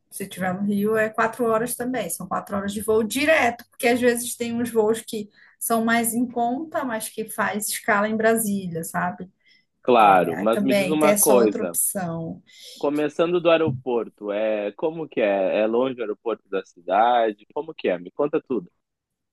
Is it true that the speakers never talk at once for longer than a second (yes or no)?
no